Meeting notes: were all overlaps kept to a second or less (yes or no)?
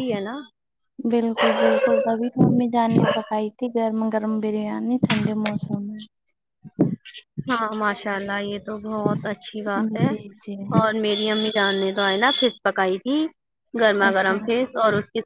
yes